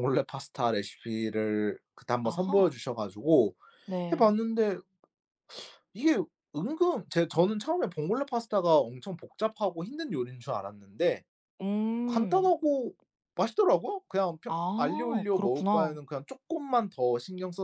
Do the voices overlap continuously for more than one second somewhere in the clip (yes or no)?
yes